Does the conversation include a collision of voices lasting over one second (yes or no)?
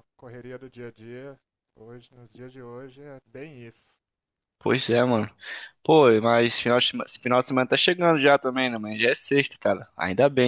no